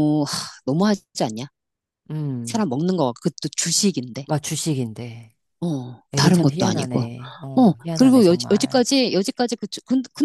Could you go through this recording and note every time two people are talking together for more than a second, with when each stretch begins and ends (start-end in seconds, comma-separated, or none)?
6.1-8.9